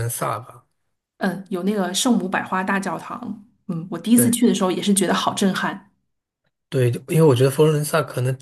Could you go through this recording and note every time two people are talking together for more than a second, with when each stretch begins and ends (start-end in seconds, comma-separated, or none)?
none